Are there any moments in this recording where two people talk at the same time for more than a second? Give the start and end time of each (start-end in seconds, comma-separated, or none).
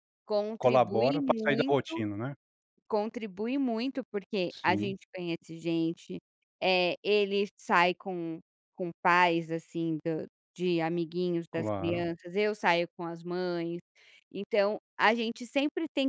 0.6-2.0